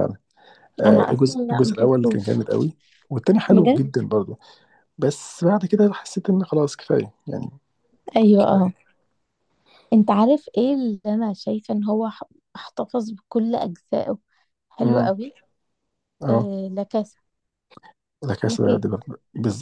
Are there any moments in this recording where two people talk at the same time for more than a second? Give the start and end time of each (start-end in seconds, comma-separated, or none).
0.9-2.4